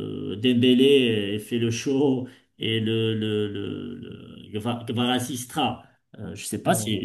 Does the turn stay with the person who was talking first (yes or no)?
yes